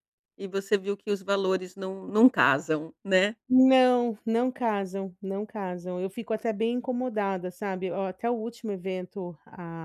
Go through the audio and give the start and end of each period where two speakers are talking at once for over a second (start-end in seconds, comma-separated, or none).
none